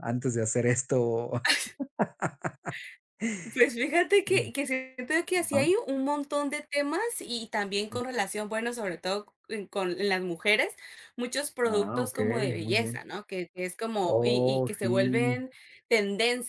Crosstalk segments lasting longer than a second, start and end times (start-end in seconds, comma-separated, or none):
11.6-13.1, 14.2-15.4